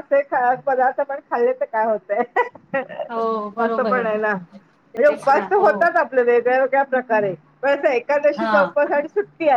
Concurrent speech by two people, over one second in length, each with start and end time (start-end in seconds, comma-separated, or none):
none